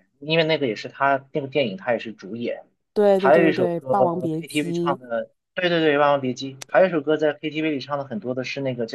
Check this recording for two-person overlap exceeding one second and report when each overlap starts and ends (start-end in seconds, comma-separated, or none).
3.2-5.0